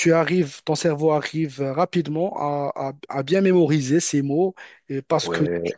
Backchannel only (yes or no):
yes